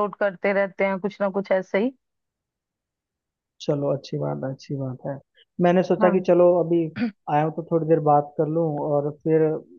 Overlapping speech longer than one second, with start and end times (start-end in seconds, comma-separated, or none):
none